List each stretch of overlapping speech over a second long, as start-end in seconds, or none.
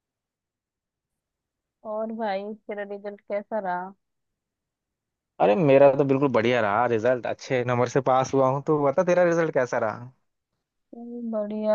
none